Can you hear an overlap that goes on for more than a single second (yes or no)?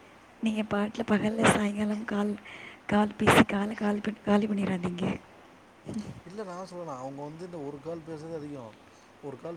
no